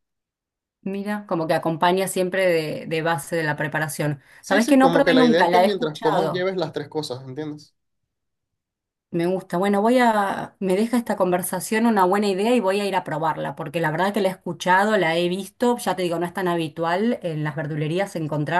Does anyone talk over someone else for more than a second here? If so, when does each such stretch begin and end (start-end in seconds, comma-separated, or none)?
4.4-6.5